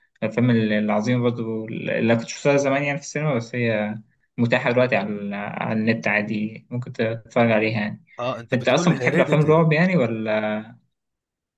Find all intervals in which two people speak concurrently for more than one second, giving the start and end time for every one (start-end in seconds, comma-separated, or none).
8.5-9.7